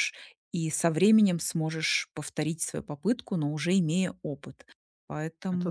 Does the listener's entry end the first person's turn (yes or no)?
no